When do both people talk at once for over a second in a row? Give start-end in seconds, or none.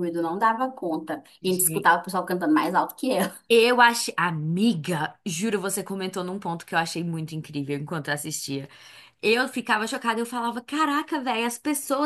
none